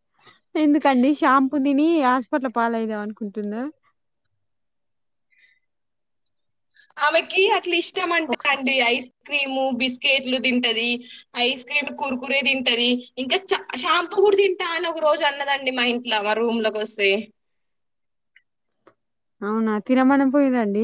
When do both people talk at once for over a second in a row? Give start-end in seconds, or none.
none